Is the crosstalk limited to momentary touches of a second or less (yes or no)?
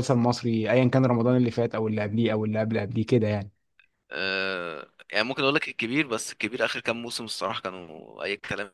yes